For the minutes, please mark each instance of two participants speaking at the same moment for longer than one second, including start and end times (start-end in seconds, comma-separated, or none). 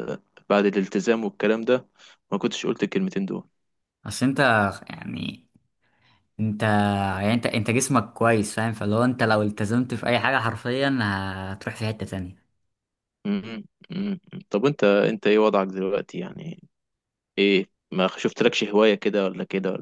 none